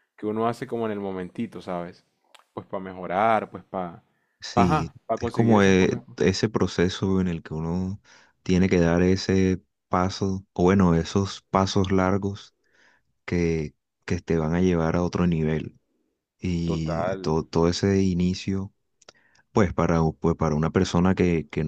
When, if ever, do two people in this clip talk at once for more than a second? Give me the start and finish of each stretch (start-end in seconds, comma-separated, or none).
4.5-6.0